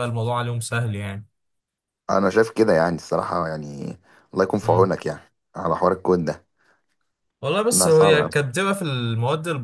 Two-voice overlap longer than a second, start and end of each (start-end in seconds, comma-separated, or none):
none